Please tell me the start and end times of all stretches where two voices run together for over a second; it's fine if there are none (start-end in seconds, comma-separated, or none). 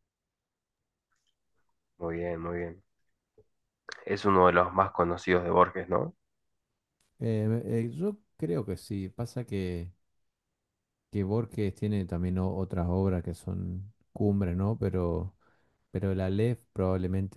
none